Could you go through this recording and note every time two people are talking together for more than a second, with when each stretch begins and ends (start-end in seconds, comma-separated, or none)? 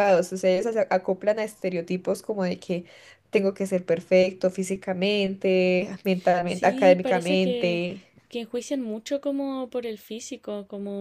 6.5-7.8